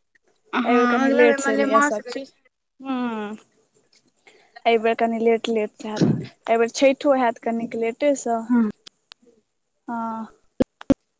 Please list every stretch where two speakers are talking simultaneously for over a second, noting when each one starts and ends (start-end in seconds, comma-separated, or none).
0.7-2.2